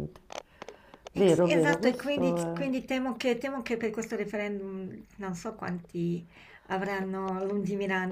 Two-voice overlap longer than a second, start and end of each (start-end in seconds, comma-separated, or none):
1.1-2.6